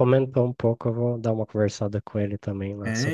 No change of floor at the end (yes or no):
no